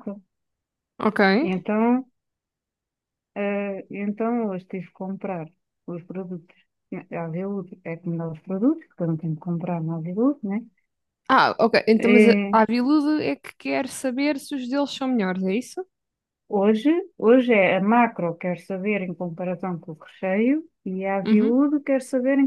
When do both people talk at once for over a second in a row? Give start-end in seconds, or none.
none